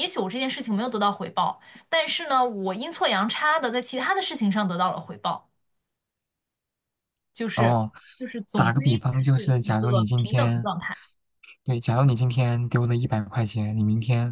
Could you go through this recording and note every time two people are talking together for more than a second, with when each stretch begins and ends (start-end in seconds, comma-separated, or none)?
8.5-10.7